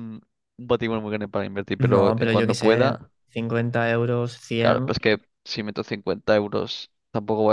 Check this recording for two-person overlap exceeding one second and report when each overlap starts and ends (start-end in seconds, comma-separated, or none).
1.8-3.1